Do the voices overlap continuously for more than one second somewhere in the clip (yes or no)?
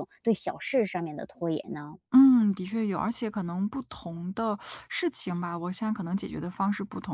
no